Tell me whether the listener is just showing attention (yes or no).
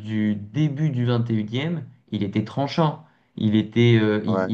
yes